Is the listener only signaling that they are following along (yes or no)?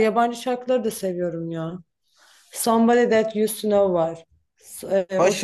no